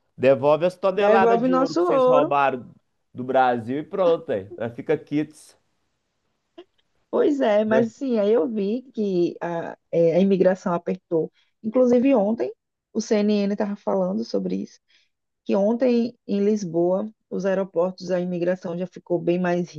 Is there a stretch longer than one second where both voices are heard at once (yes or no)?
yes